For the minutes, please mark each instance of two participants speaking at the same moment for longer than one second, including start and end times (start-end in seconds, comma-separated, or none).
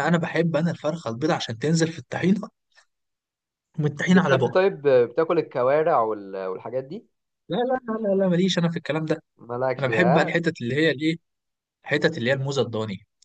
none